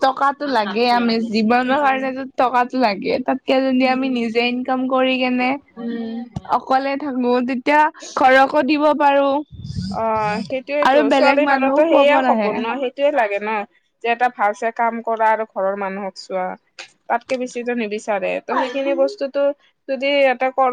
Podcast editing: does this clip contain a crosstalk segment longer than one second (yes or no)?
yes